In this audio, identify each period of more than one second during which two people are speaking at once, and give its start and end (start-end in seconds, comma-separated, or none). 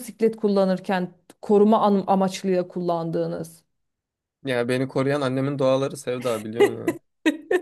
none